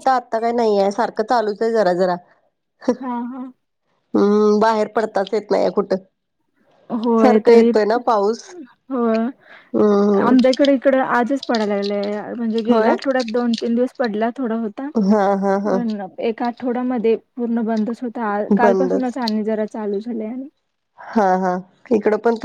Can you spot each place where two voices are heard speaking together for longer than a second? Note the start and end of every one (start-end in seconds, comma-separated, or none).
none